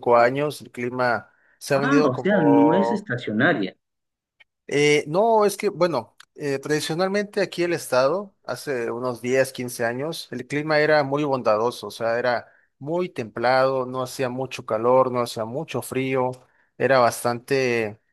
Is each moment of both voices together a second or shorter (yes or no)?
no